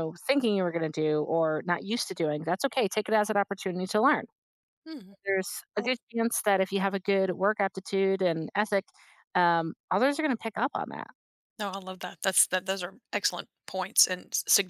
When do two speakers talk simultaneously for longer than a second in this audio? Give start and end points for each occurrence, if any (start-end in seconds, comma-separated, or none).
none